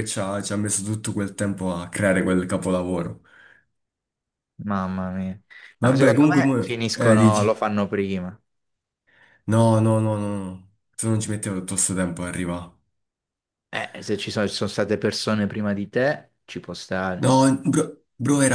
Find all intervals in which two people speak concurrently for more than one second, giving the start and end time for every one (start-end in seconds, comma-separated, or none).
5.8-7.5